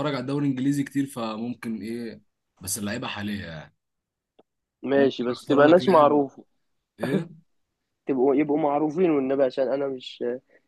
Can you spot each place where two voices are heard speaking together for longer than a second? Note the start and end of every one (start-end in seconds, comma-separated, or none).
5.0-6.2